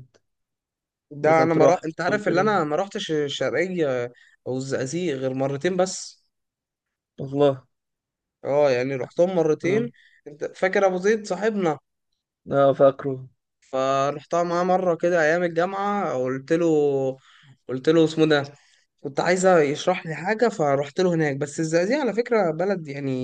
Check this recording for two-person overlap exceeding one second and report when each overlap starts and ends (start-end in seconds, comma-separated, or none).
1.2-2.5